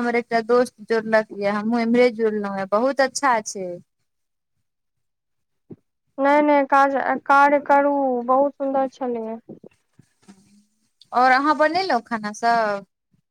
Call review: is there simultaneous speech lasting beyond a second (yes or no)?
no